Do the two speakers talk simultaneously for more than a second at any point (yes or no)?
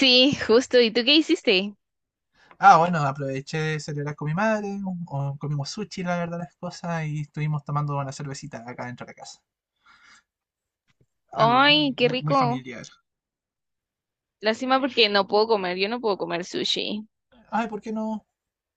yes